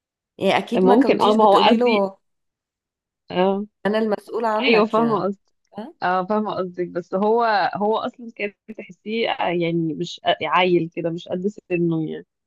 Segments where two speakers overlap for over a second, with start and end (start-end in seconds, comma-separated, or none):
0.7-2.0